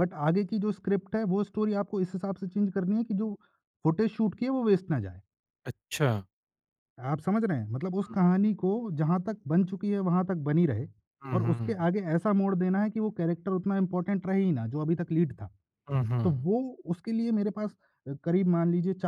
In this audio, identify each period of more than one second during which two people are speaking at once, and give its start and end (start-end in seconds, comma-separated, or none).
none